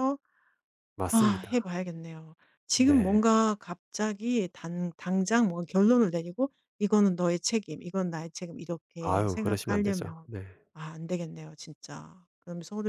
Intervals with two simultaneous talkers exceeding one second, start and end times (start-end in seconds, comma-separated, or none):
9.0-10.3